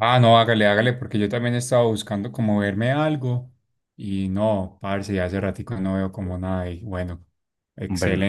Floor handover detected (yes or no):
no